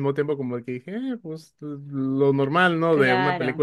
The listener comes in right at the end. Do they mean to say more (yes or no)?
no